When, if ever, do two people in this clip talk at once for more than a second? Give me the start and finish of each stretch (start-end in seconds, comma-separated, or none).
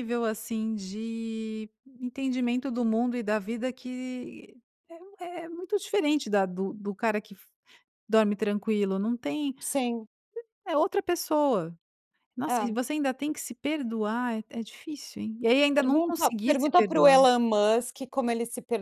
15.8-17.1